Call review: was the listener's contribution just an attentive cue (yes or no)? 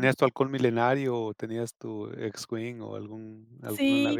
no